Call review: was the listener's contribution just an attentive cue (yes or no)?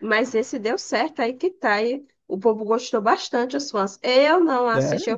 yes